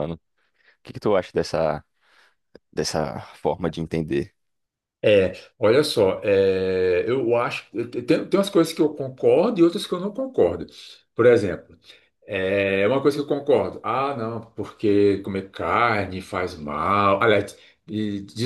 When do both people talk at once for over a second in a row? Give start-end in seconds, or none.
none